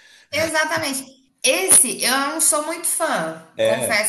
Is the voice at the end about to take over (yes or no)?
no